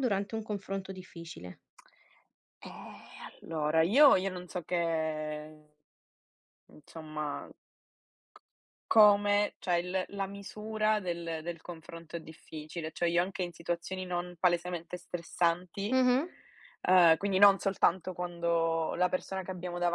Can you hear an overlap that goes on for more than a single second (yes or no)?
no